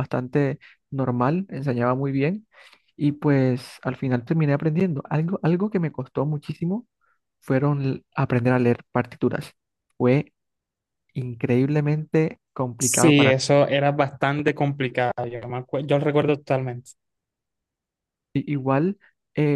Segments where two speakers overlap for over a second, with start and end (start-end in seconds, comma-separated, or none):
none